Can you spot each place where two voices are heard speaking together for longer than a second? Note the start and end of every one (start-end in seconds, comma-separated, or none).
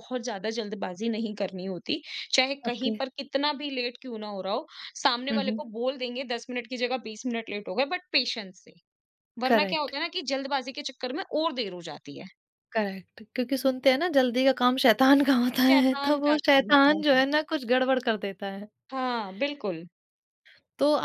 15.7-17.2